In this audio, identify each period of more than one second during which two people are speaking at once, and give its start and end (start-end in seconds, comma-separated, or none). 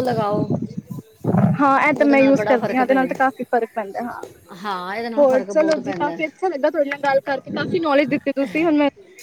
1.9-3.4